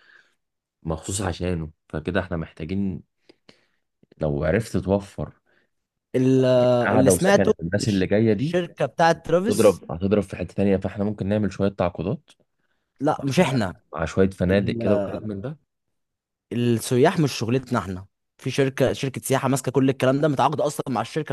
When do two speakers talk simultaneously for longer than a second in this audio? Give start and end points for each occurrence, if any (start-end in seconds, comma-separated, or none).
6.9-8.6